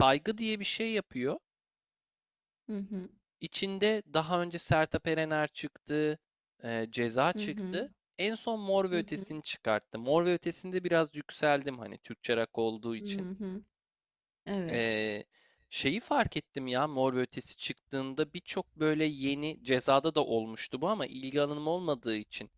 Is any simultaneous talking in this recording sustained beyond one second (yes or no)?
no